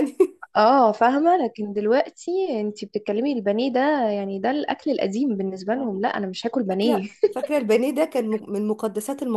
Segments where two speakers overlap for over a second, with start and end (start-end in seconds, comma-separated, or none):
none